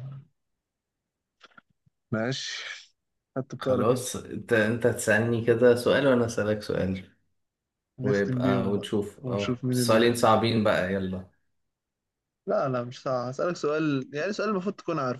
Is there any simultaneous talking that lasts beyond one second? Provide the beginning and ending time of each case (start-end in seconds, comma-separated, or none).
8.0-10.2